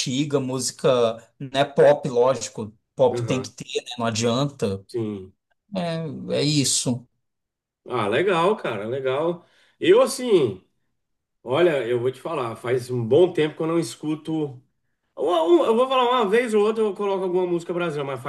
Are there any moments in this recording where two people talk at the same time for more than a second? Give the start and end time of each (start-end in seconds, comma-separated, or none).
none